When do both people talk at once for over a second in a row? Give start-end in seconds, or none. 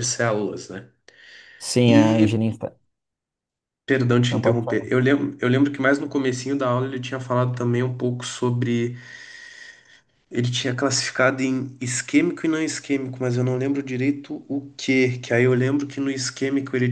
none